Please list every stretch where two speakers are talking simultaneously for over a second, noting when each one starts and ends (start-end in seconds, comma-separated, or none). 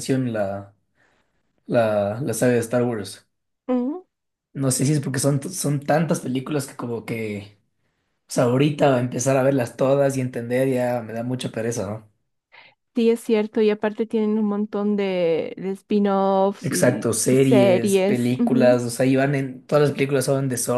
16.6-18.8